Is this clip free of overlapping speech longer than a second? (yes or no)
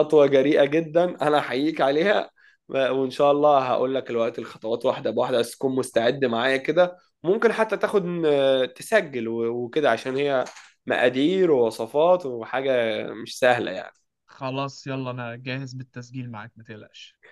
yes